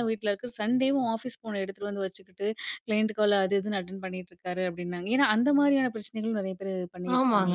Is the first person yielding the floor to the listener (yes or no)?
yes